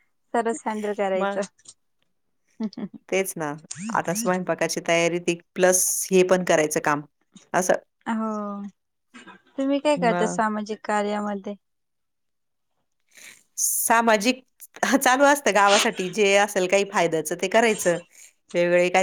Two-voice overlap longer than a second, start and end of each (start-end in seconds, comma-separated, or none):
none